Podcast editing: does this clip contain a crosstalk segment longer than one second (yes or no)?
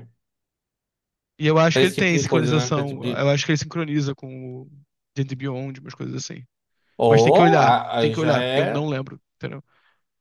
yes